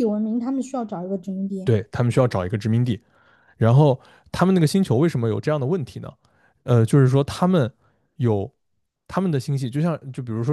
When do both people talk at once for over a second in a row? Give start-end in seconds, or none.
none